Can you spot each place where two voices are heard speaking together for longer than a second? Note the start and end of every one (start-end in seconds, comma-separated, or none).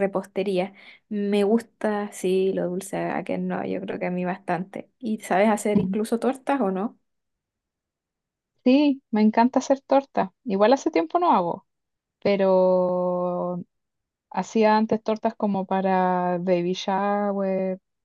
none